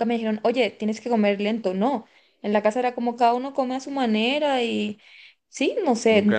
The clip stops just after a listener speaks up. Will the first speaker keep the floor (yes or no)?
no